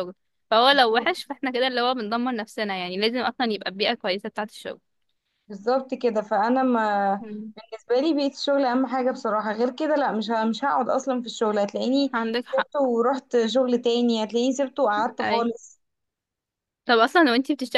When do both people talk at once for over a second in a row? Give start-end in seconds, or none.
none